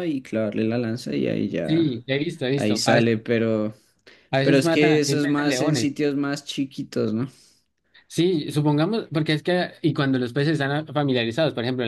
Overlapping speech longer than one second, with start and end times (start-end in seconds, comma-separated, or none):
4.4-5.9